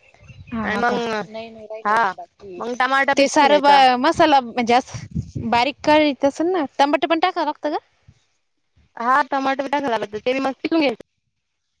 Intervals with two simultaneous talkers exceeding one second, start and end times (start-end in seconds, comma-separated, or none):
none